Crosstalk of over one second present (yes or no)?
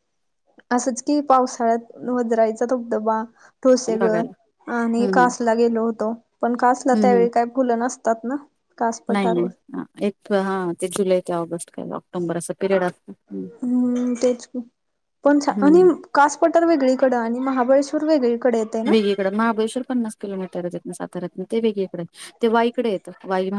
no